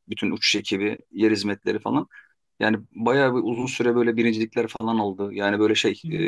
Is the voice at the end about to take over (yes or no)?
no